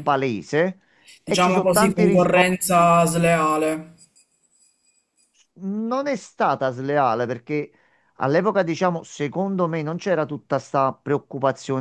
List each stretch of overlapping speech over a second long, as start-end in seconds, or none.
1.2-3.0